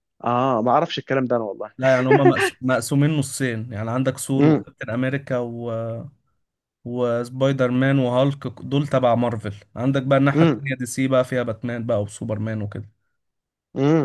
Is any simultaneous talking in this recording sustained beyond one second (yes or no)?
no